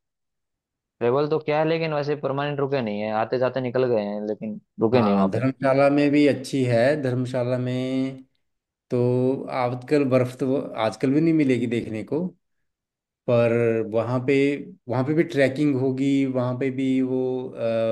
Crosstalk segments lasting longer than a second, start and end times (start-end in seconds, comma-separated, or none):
none